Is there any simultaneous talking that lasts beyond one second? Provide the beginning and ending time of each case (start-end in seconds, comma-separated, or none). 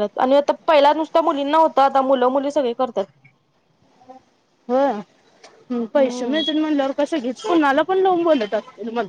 none